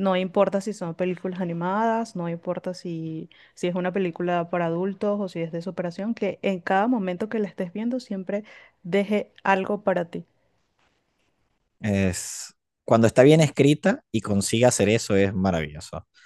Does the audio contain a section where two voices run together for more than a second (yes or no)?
no